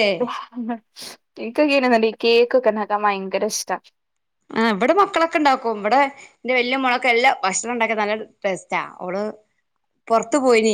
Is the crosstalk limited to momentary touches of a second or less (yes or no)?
yes